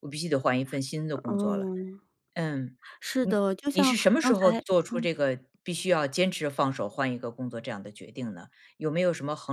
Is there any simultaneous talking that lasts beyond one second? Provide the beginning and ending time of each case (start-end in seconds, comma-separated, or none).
3.2-5.1